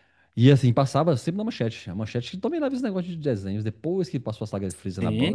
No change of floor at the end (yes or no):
no